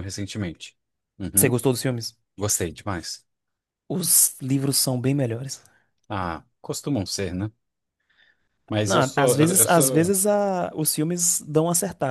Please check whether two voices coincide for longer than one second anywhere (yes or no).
yes